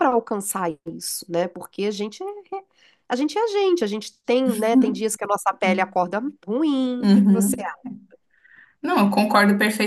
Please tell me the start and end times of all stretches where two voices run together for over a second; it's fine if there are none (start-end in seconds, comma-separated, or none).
none